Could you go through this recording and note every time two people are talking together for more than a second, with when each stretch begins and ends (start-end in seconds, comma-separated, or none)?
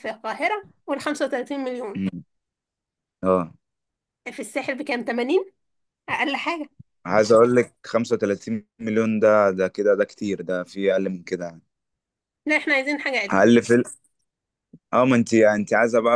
none